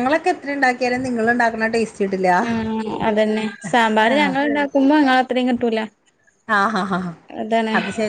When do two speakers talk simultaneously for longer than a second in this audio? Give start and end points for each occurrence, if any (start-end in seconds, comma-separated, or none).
none